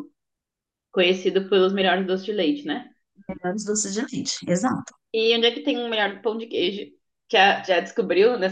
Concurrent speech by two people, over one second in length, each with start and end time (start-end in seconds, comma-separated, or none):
none